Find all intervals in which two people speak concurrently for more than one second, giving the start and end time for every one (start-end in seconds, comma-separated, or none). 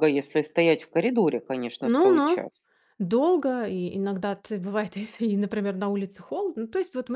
none